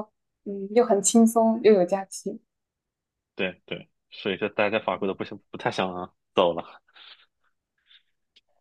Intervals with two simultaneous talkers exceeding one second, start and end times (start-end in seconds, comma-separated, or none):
none